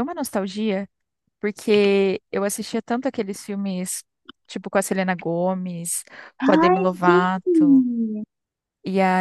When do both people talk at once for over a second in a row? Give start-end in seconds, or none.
6.6-7.8